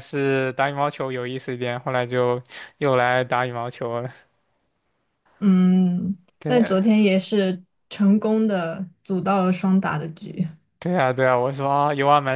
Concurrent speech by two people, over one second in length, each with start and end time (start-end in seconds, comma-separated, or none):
none